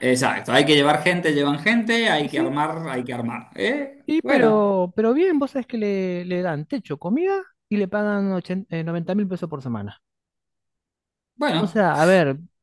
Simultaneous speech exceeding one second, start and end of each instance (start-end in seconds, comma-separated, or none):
none